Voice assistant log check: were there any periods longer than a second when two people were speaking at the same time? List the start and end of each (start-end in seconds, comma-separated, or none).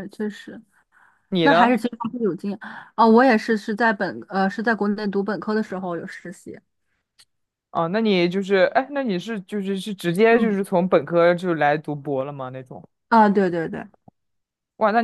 none